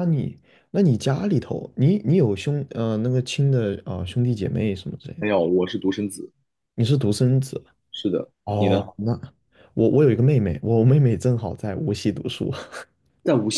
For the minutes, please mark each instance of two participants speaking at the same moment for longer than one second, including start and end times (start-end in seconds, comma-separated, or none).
none